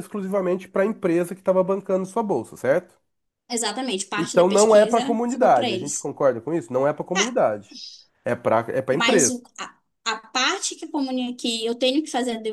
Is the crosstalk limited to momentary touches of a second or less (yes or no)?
no